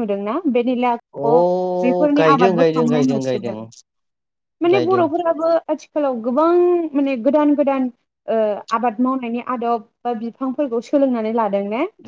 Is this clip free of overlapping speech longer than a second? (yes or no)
no